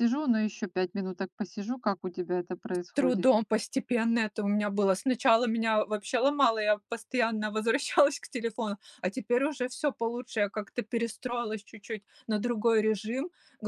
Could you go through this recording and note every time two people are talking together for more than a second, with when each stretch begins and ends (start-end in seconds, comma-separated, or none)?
none